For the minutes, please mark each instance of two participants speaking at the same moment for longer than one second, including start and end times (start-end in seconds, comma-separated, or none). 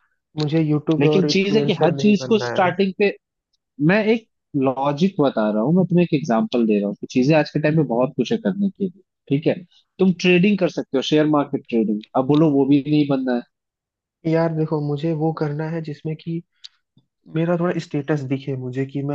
1.0-2.7